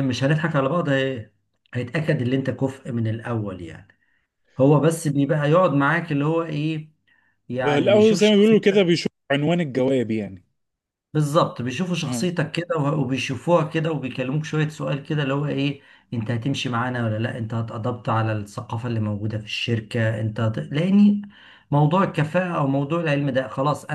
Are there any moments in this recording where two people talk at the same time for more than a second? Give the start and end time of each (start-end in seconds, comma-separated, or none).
7.6-8.9